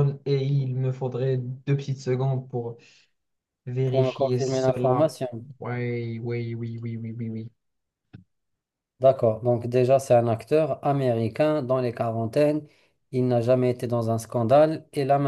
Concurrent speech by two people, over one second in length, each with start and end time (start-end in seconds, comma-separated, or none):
3.9-5.1